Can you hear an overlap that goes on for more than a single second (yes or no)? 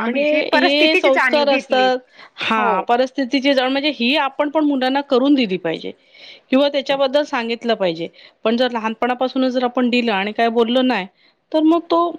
yes